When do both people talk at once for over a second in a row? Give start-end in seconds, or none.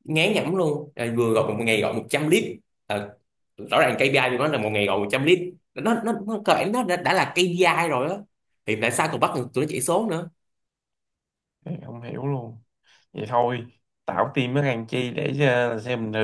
none